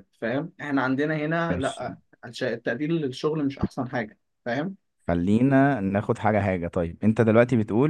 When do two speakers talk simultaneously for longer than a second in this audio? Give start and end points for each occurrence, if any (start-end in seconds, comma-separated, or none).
none